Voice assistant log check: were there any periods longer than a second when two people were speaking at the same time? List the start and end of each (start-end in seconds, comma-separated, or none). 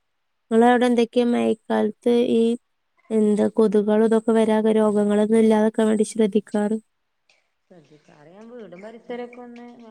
none